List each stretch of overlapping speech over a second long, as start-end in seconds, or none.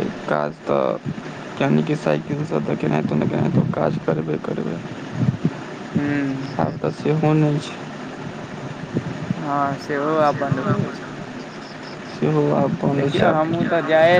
none